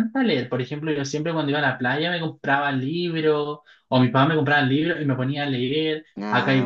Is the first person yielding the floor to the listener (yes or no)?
no